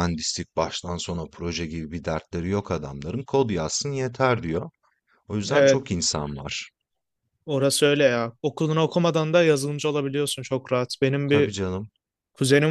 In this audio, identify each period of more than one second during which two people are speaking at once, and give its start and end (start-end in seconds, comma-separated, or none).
none